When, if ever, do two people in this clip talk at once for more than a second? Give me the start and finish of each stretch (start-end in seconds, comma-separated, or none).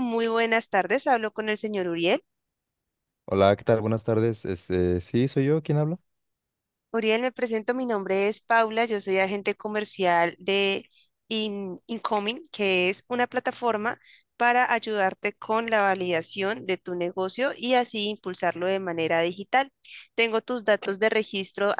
none